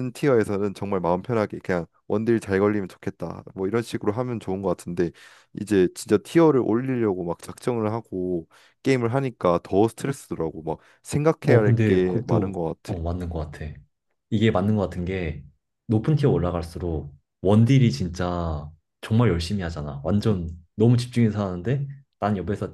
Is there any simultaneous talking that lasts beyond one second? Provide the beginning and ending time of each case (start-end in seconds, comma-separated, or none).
11.4-13.0